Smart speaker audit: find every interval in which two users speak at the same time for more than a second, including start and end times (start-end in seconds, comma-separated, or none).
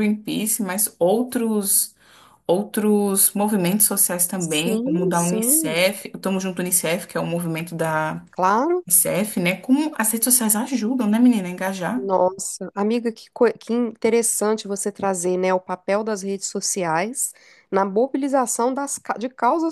4.4-5.8